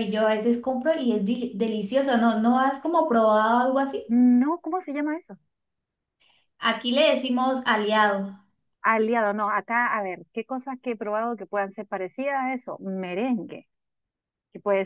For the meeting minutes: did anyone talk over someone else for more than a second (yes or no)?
no